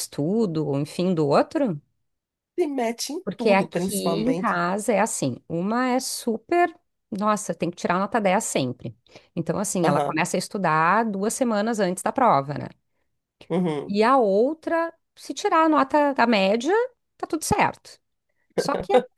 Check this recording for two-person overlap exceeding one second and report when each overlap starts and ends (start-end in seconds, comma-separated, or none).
3.2-4.5